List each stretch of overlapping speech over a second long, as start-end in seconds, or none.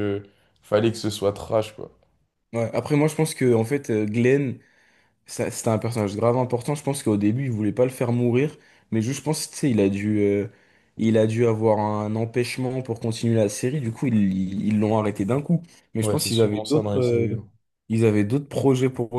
16.0-17.4